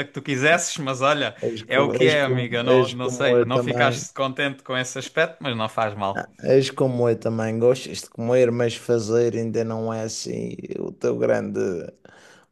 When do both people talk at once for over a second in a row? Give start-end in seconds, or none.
1.5-4.0